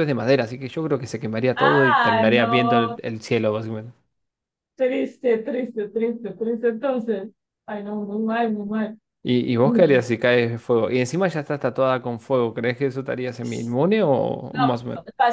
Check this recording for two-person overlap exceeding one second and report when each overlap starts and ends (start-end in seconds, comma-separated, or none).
1.6-3.0